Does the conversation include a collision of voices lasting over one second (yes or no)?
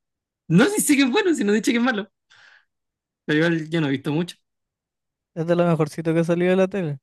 no